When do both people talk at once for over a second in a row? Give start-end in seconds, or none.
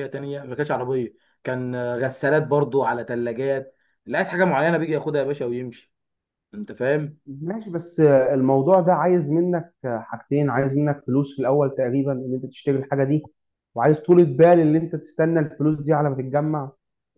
none